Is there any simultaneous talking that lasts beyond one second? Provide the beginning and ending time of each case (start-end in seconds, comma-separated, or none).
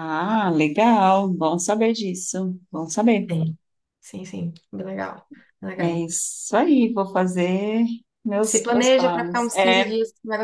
8.4-9.9